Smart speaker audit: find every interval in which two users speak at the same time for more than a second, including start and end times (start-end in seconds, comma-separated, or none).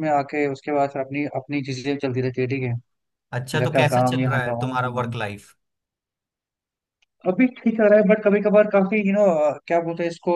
3.5-5.1